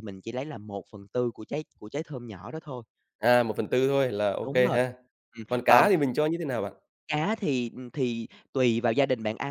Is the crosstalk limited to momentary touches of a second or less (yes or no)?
yes